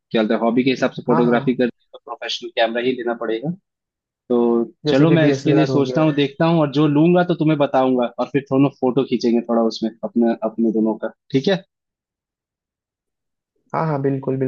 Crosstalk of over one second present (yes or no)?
yes